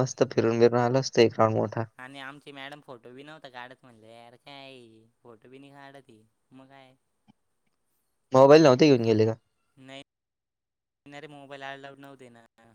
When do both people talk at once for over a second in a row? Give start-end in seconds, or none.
none